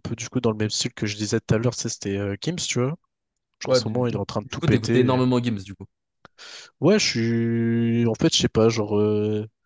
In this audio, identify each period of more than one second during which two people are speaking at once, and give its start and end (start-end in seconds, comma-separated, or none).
3.6-5.2